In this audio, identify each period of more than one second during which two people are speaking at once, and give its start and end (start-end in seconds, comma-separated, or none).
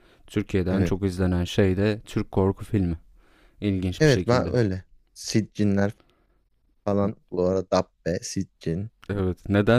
none